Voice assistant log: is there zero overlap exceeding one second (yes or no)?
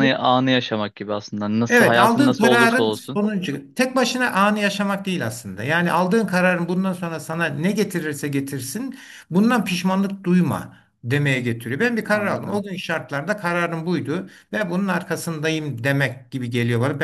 no